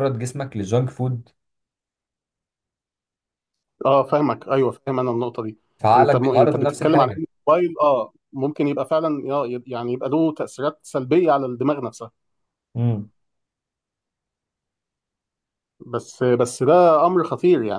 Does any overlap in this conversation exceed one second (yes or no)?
yes